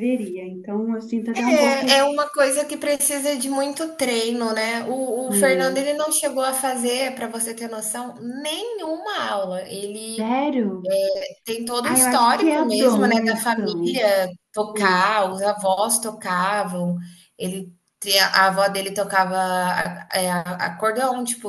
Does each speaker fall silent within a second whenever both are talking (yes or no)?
no